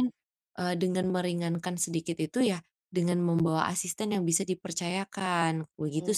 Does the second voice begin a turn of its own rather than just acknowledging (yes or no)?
yes